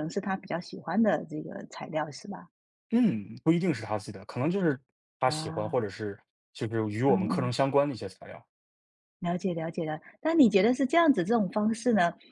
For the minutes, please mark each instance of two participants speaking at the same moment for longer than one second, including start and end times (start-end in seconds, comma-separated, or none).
none